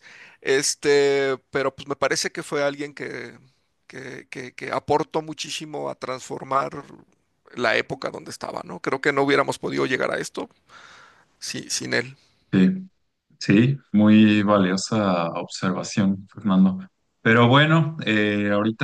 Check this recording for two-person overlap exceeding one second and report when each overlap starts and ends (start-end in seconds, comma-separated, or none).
none